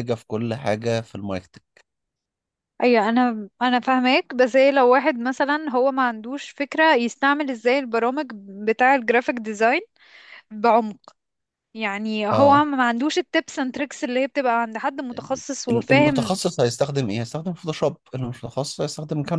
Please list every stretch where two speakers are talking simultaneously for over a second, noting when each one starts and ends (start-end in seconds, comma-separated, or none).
15.1-16.4